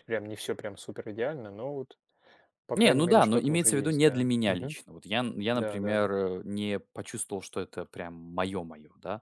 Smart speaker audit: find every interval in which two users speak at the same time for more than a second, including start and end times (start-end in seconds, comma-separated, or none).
2.7-4.8